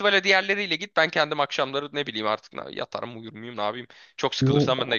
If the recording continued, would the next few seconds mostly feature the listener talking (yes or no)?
yes